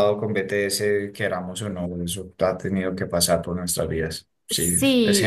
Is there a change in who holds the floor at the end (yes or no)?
yes